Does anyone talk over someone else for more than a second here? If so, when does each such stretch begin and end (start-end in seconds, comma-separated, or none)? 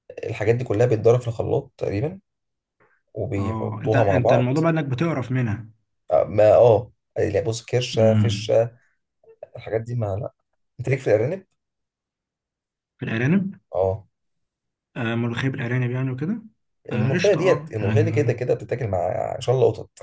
3.4-4.6, 16.9-18.3